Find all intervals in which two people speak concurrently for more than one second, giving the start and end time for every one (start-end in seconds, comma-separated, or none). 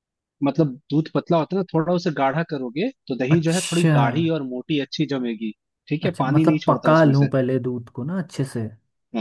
6.0-7.3